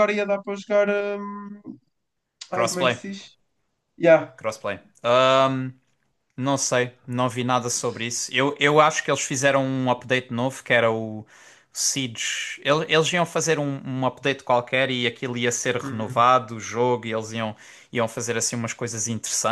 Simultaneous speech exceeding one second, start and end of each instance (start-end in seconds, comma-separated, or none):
none